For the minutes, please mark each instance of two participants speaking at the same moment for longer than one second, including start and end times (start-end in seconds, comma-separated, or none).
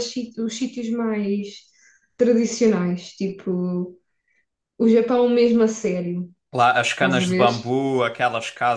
none